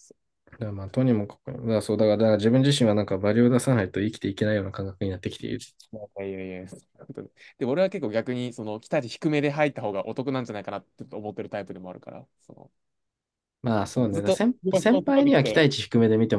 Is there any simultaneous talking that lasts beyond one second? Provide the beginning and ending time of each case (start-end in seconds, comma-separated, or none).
13.9-15.6